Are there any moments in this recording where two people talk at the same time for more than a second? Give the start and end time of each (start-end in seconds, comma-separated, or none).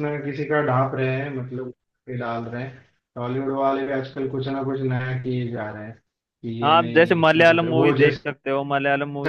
6.6-8.6